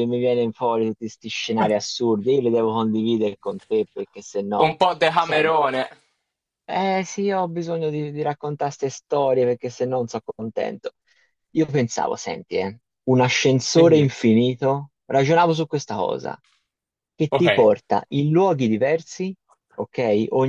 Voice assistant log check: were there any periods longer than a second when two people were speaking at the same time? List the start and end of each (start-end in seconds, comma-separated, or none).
none